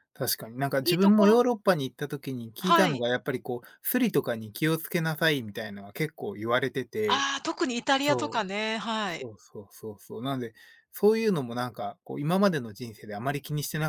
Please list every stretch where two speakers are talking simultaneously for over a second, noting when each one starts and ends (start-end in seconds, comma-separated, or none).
none